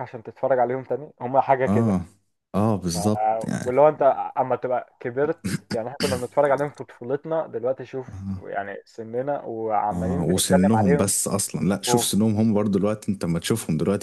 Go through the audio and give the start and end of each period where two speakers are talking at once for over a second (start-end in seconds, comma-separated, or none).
9.9-11.1